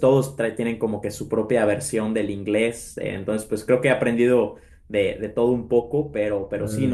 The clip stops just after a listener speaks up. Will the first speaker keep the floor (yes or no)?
yes